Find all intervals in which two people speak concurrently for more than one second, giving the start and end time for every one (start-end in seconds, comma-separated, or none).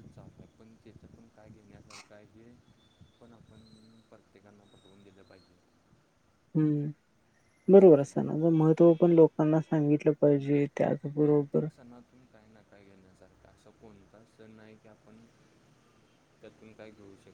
none